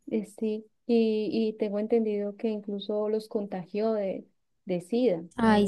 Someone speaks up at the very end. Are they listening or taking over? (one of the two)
taking over